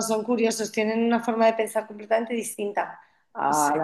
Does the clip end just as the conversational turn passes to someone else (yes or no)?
no